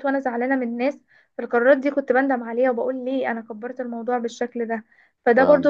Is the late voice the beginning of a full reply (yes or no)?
no